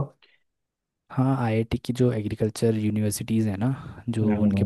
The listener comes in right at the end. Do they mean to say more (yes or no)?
no